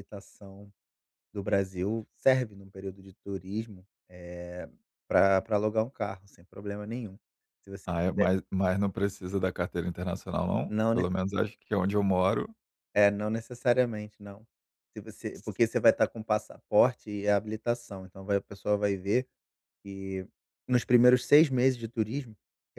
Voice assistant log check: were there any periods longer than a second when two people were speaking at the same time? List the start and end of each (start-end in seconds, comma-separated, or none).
none